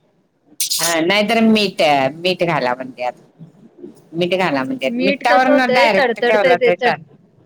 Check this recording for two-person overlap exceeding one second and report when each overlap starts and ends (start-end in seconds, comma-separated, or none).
5.5-6.9